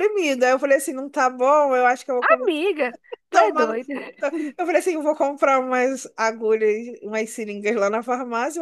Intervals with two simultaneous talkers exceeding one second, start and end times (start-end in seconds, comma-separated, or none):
none